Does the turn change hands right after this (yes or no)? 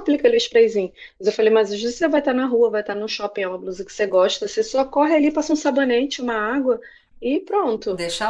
no